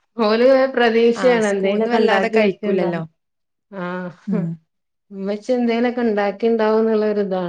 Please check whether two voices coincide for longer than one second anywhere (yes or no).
yes